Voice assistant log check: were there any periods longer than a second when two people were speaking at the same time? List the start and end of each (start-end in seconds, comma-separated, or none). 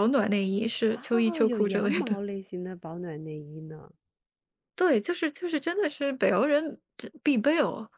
0.9-2.2